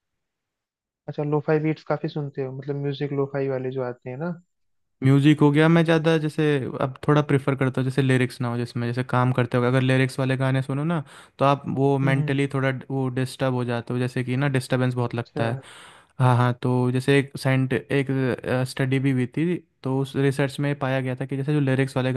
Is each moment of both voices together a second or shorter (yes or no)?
yes